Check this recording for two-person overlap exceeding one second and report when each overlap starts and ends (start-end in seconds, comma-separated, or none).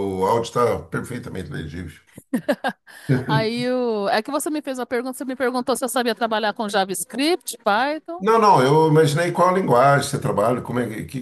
none